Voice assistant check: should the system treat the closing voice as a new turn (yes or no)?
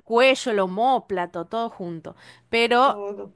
no